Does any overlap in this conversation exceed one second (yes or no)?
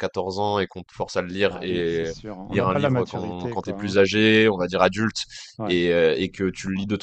yes